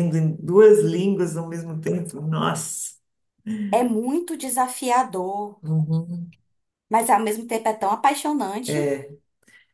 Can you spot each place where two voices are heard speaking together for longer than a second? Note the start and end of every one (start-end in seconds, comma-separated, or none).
none